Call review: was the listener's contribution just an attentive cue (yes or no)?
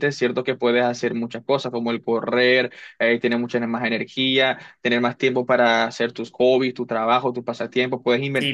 no